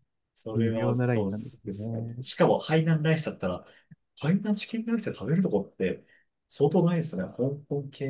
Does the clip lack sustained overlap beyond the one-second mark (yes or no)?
no